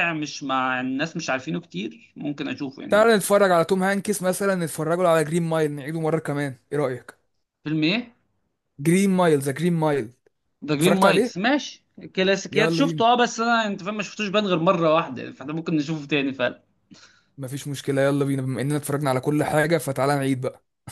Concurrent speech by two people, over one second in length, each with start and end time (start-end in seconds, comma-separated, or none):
none